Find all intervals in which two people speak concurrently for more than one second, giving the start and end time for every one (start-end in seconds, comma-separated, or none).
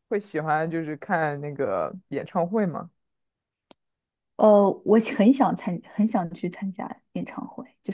none